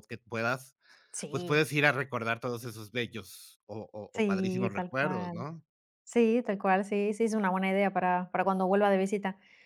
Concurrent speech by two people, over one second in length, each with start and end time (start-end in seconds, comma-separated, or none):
4.1-5.5